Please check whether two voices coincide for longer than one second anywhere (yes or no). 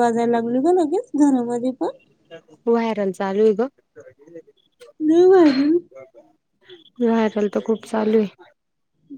no